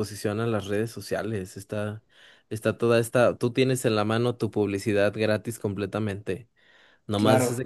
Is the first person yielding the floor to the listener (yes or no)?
no